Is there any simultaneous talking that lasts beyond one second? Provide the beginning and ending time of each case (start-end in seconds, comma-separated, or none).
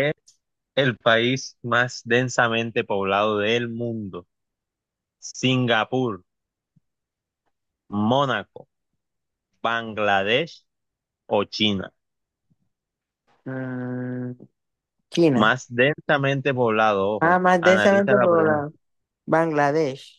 17.2-18.7